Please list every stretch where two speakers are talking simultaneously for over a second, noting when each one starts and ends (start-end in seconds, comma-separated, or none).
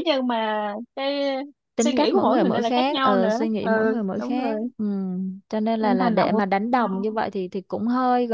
1.8-4.5, 5.8-7.2